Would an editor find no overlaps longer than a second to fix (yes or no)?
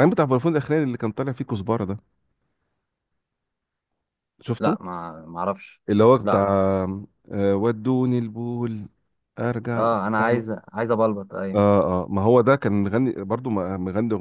yes